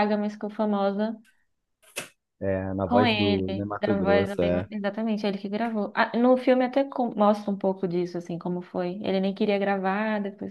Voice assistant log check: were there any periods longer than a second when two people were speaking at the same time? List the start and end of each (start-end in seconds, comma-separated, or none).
2.9-4.7